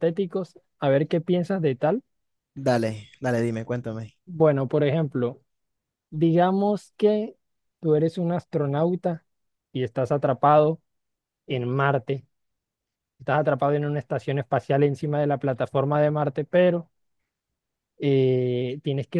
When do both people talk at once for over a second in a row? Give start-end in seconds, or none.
none